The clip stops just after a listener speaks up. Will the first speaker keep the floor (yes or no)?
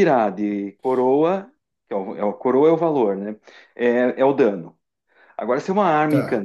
yes